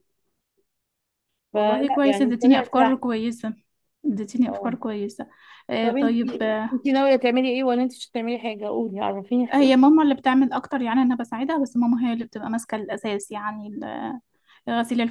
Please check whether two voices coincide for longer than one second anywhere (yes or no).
yes